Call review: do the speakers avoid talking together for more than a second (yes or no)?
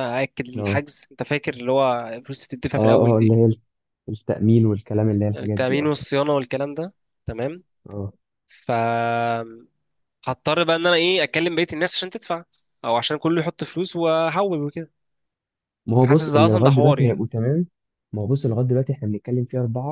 no